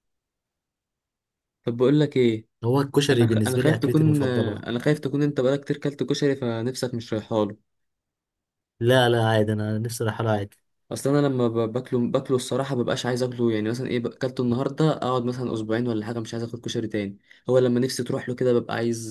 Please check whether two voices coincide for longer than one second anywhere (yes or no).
yes